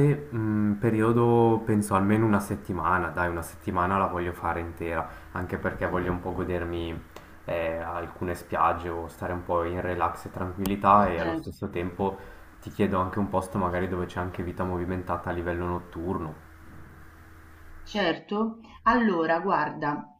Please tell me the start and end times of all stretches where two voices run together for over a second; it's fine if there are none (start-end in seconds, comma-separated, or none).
none